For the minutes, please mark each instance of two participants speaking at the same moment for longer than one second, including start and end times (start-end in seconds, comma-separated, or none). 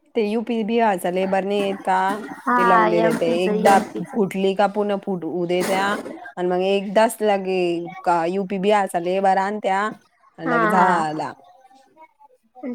2.6-4.1